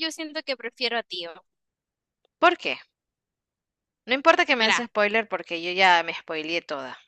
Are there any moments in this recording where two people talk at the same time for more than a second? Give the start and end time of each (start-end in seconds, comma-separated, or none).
none